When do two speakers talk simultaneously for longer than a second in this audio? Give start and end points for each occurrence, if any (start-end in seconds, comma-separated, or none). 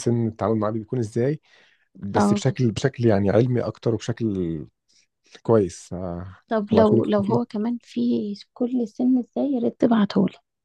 none